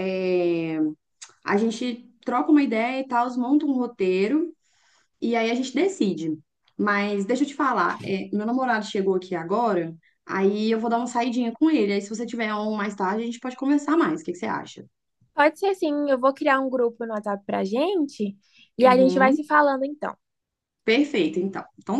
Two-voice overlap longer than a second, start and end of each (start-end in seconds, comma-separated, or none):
none